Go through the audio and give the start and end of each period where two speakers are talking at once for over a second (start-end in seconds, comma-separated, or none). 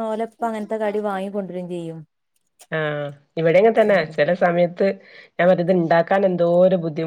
none